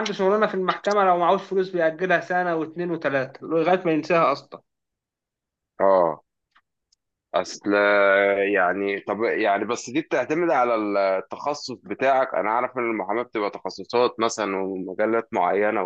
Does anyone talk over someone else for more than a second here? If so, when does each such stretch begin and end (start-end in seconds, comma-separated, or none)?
none